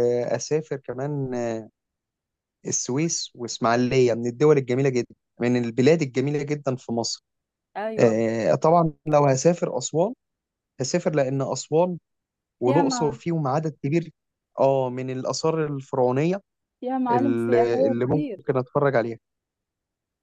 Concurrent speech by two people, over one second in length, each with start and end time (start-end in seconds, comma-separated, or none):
17.1-18.5